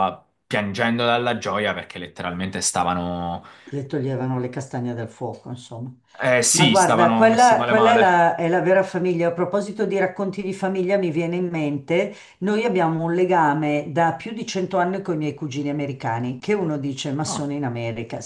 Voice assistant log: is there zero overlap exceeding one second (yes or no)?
no